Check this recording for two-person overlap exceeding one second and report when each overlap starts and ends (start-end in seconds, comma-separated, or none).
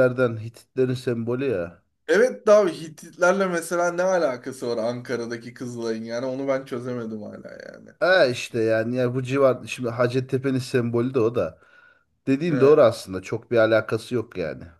none